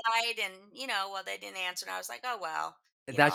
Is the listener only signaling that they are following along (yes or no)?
no